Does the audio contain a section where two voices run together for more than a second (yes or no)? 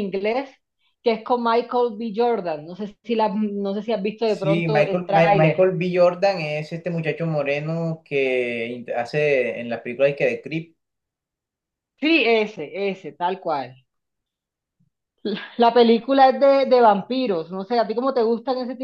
yes